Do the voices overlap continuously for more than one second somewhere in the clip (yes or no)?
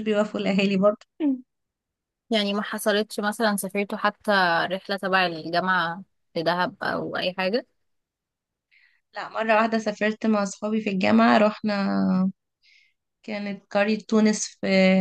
no